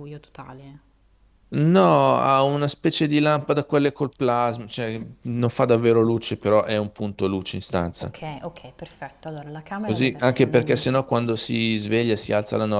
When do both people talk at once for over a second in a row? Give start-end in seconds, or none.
9.8-11.1